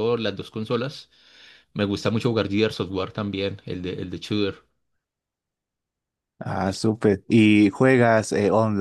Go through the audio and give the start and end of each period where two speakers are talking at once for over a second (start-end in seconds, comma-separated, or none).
none